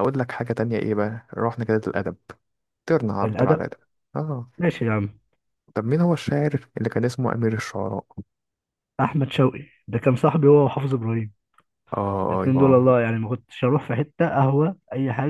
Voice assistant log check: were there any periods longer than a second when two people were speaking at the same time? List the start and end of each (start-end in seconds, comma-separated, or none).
none